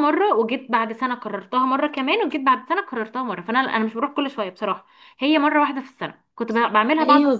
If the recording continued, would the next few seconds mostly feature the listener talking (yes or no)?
yes